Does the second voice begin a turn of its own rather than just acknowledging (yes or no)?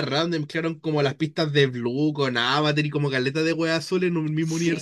yes